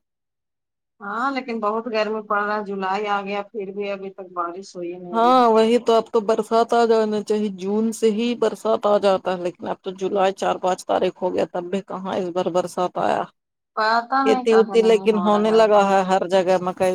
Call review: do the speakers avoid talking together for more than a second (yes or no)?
no